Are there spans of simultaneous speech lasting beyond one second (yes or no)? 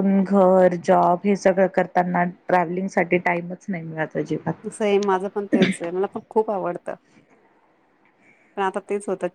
no